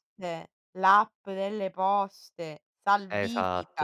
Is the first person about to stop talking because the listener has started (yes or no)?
yes